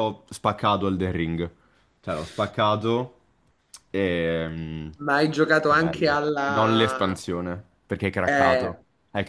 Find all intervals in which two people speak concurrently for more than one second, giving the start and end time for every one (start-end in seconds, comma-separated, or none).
5.7-7.2